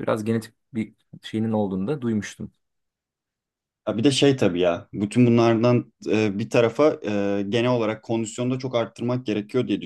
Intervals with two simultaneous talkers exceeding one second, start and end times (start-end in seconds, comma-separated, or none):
none